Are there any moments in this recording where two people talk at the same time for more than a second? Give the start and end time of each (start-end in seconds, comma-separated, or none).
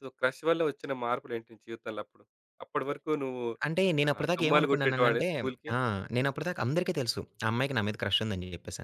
4.1-5.3